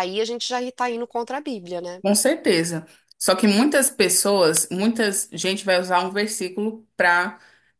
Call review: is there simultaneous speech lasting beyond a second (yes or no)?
no